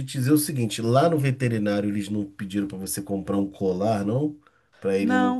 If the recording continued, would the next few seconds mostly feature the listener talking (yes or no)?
yes